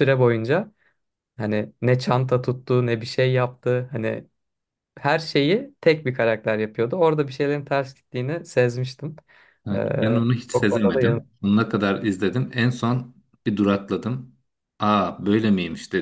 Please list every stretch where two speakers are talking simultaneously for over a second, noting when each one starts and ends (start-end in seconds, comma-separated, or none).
9.7-11.3